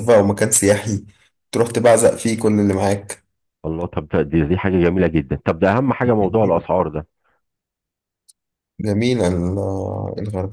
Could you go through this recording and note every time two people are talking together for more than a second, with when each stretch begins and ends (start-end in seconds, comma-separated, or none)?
none